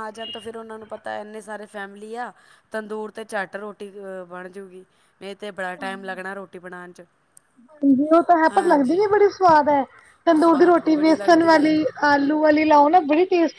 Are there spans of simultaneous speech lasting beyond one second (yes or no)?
yes